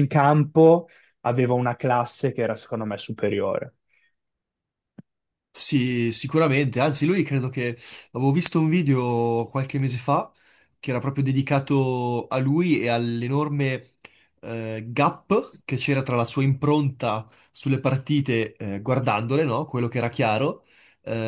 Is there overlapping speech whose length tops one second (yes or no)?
no